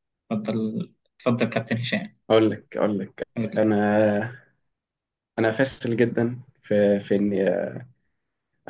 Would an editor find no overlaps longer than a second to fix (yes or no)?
yes